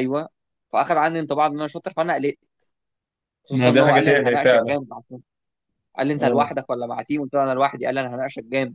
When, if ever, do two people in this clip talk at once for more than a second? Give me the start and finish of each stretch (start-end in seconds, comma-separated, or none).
3.5-4.7